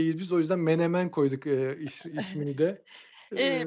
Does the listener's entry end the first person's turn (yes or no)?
yes